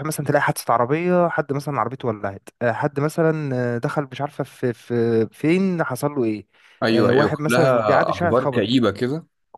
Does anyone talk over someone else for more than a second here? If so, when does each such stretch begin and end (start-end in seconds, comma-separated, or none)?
6.9-8.8